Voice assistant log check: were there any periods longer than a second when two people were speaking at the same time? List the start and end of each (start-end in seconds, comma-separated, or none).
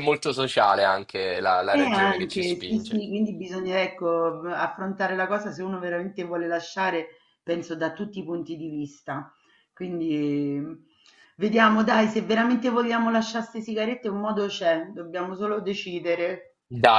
1.7-3.0